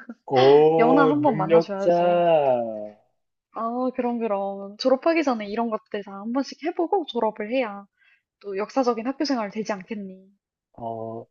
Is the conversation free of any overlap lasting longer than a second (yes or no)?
no